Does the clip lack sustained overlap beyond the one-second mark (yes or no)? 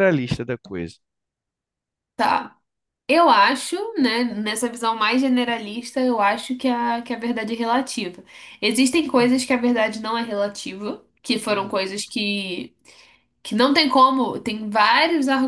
yes